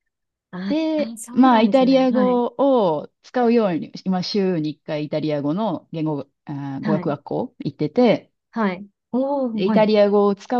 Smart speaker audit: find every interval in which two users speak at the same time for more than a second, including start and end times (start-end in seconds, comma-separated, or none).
0.7-2.4